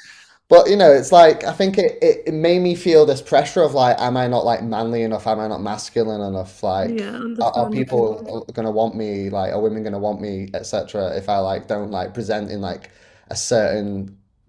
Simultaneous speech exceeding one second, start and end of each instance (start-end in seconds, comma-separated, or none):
6.8-8.3